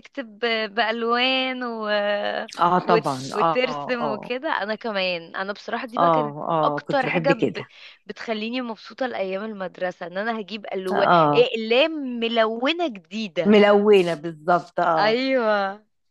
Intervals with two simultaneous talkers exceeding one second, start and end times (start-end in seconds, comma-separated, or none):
2.9-4.3, 6.0-7.7